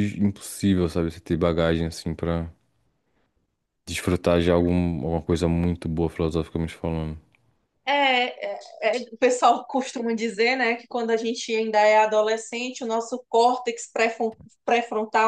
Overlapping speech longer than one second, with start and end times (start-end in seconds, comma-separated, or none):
none